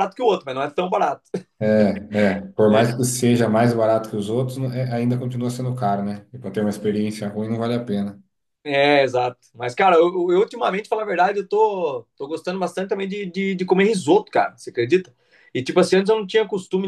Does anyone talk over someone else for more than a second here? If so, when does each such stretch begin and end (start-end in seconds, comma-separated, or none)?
none